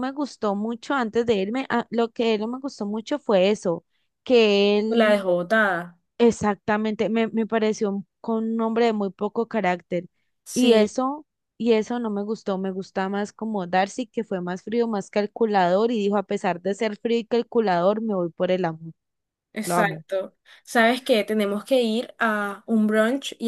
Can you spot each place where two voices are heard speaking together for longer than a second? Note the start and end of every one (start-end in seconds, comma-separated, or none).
none